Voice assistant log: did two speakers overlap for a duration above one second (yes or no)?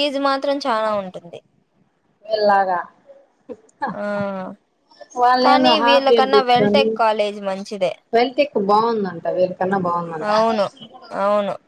yes